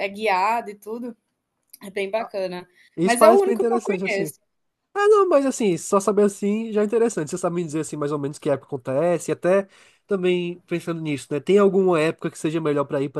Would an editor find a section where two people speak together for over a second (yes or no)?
yes